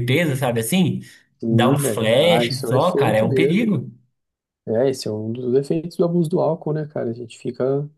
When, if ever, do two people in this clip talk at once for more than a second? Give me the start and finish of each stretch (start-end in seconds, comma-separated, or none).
1.5-3.6